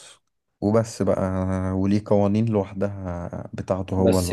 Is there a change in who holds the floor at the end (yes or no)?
yes